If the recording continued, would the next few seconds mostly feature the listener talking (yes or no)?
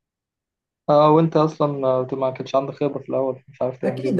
yes